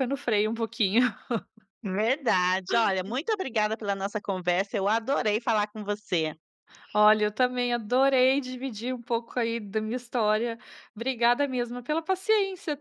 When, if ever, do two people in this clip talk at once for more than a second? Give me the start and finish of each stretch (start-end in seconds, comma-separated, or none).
none